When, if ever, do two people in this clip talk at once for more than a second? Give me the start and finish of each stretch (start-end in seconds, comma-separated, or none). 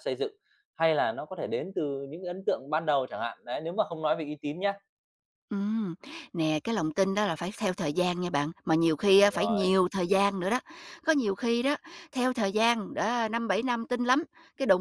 none